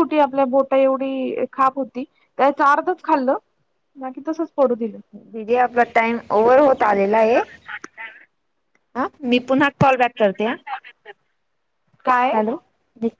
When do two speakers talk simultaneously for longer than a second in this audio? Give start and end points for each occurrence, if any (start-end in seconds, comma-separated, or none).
none